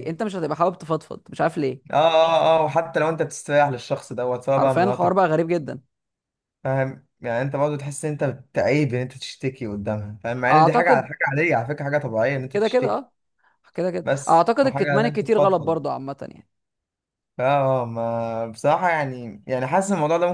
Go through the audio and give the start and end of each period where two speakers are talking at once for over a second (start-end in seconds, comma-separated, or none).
14.0-15.8